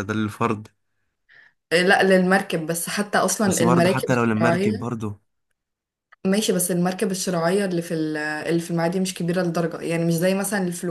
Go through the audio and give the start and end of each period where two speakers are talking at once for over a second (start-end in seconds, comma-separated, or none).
3.5-4.9